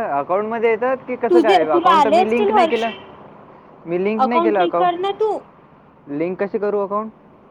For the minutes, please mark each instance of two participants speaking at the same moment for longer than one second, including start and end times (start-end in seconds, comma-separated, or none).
1.3-2.9